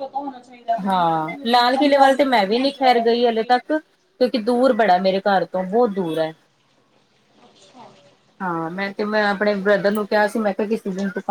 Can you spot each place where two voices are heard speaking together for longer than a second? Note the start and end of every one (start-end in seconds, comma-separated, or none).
0.8-3.5